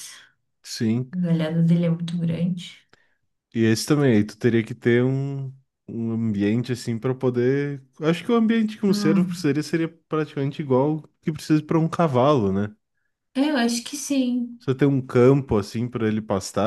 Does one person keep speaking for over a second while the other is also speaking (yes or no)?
no